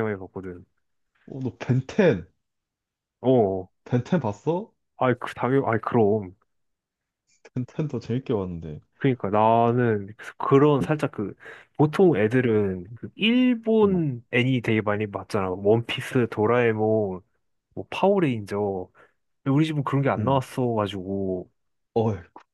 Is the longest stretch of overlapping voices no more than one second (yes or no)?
yes